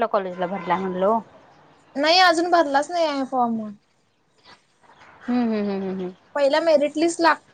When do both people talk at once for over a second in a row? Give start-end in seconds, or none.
none